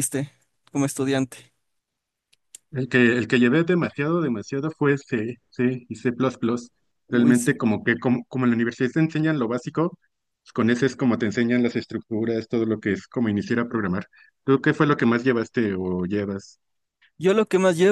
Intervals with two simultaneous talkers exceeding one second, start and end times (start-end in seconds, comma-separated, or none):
none